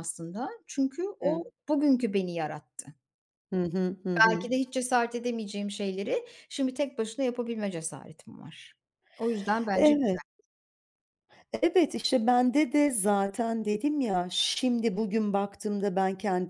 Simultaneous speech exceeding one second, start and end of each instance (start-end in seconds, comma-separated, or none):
none